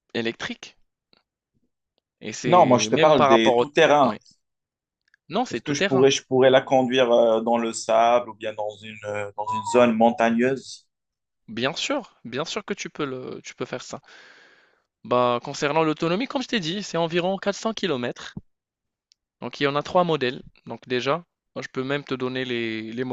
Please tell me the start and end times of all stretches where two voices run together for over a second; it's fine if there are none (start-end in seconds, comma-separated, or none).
2.5-4.2